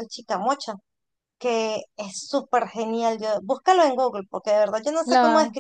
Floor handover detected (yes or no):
no